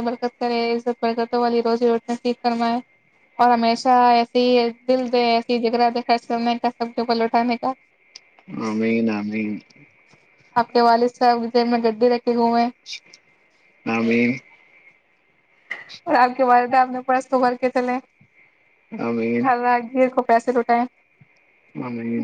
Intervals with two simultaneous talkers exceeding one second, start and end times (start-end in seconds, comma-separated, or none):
none